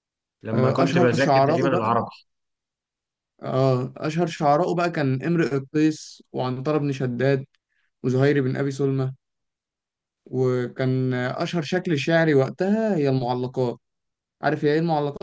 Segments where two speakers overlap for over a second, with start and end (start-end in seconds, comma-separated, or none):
0.5-1.9